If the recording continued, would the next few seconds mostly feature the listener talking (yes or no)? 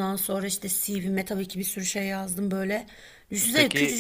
no